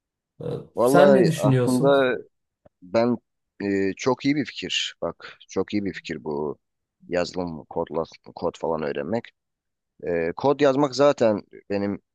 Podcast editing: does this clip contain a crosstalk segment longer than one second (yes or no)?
yes